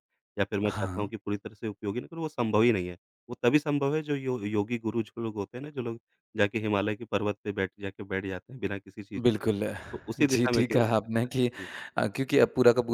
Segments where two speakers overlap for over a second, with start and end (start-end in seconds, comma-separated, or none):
10.2-11.5